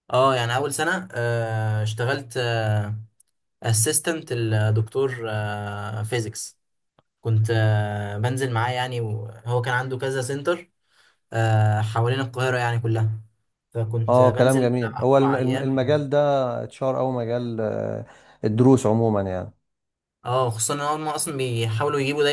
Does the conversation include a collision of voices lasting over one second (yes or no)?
yes